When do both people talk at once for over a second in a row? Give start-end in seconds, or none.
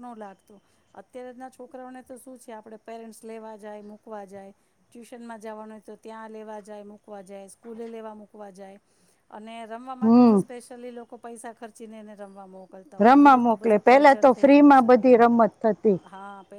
13.0-14.9